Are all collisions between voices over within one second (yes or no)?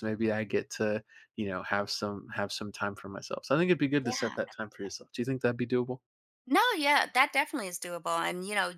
yes